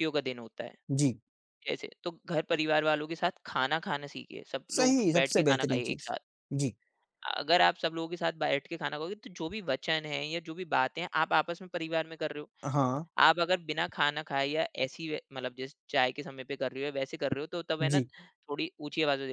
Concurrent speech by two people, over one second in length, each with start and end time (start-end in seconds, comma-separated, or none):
4.7-6.1